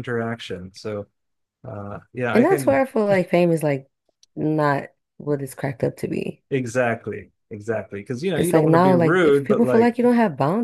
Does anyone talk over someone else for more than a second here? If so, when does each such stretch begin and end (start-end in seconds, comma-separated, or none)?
8.4-9.9